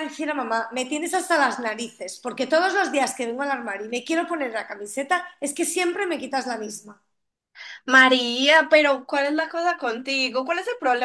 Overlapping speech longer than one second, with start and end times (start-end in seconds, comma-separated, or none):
none